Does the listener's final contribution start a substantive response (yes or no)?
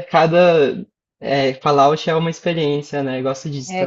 yes